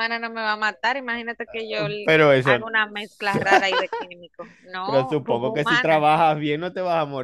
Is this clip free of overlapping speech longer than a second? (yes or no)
no